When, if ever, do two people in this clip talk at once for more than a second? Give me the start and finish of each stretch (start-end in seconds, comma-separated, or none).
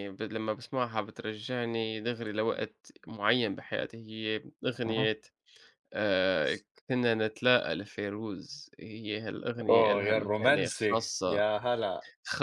9.7-11.4